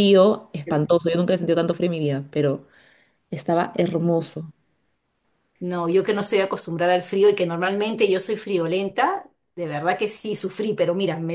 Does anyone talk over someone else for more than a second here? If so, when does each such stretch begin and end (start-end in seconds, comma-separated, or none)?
none